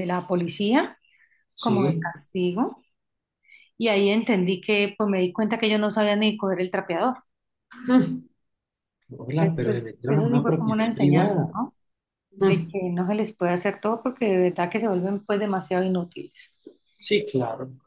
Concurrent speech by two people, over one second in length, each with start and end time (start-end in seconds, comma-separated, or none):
9.4-11.5